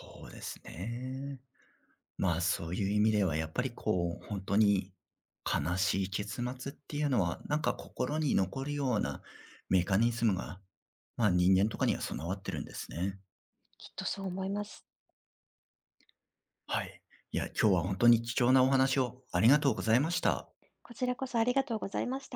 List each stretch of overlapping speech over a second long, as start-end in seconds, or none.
none